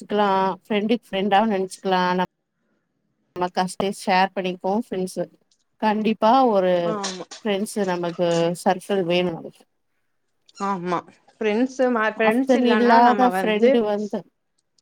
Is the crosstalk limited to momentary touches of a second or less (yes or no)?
no